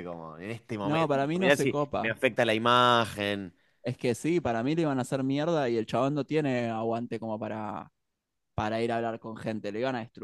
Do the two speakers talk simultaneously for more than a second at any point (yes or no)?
yes